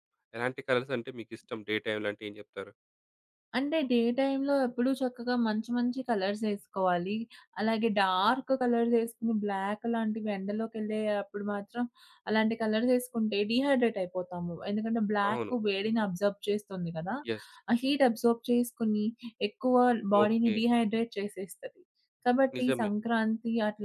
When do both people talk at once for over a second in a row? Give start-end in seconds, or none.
none